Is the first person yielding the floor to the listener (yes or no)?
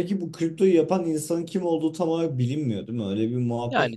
yes